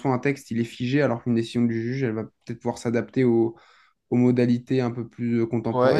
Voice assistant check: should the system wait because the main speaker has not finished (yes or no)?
no